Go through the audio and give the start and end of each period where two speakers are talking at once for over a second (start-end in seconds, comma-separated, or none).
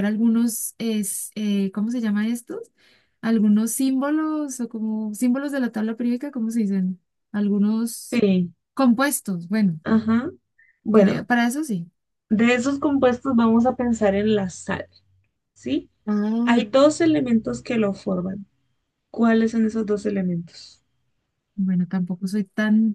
none